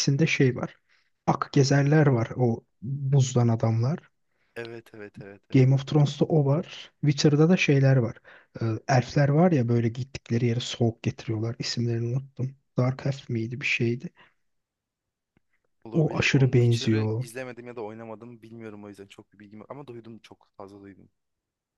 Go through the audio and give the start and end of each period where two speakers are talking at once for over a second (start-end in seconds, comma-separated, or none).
15.9-17.3